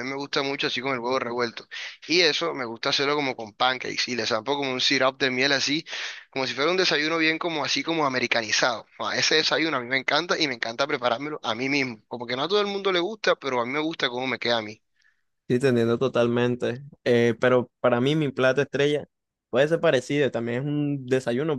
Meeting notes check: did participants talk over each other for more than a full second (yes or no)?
no